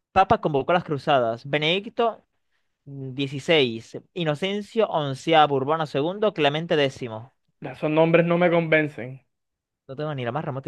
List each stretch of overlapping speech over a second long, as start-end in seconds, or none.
none